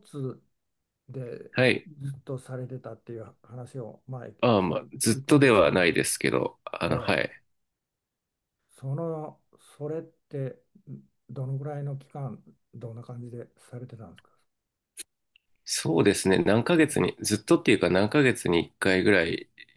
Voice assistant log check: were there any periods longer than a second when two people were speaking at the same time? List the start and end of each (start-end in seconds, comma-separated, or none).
4.4-5.9